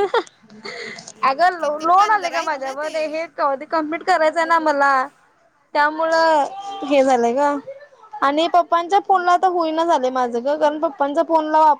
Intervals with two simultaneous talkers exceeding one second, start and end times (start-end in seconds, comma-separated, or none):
1.6-3.0